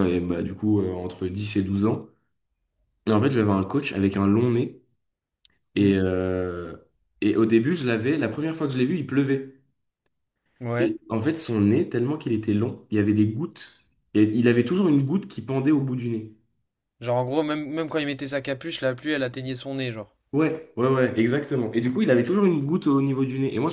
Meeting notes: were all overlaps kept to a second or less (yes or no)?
yes